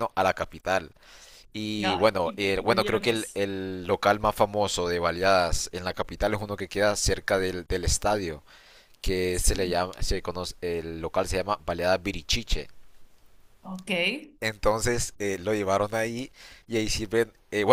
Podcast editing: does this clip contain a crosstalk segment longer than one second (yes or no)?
yes